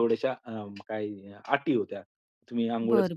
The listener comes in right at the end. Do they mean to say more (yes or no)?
yes